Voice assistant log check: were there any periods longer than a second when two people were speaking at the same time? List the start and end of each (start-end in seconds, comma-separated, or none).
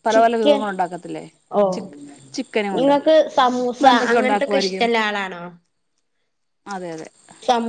2.8-4.9